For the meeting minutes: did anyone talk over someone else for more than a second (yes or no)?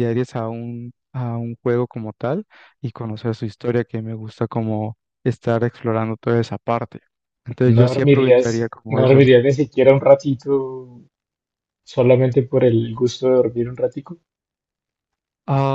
yes